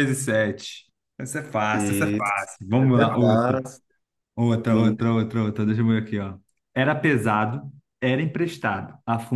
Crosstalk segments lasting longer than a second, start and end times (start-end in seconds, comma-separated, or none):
1.7-3.5